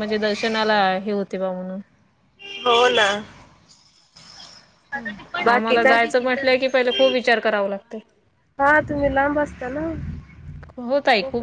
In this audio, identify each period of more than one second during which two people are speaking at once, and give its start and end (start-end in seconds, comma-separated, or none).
5.5-7.3